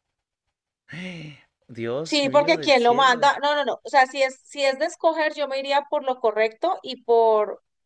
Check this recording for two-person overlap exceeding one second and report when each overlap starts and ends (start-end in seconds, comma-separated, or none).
2.0-3.3